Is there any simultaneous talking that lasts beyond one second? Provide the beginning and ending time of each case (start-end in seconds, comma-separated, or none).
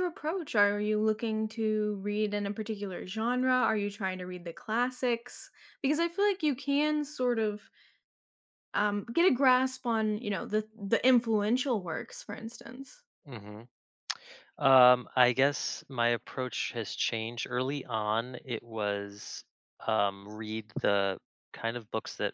none